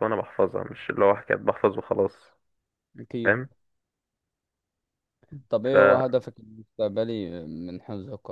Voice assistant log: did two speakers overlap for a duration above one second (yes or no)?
no